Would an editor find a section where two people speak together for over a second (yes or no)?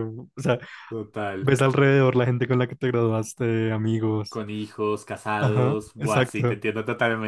yes